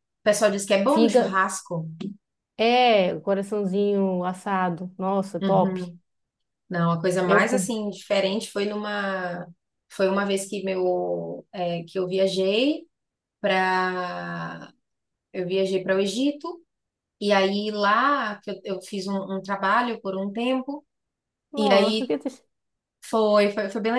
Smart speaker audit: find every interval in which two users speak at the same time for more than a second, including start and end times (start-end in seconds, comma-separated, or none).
none